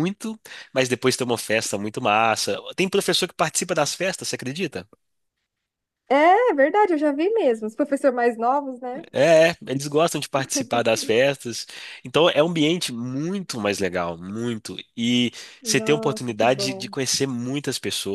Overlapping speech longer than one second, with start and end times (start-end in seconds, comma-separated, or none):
15.6-16.9